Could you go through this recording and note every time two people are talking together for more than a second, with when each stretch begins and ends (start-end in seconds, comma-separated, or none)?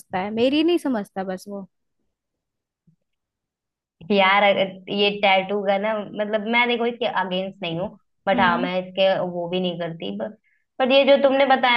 none